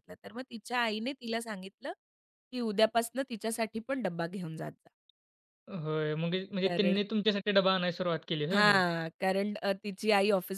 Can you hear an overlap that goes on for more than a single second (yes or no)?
no